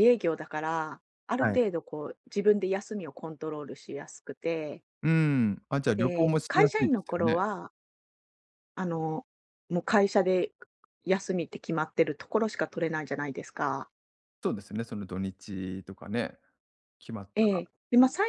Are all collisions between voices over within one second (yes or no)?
no